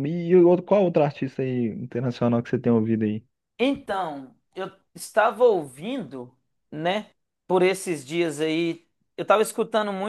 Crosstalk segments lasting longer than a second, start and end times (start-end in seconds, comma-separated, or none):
none